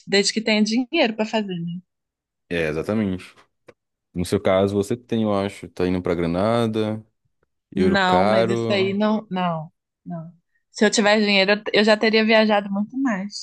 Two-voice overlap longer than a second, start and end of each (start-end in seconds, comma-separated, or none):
7.8-9.0